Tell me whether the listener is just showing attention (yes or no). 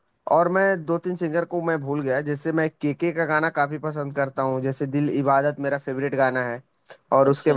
yes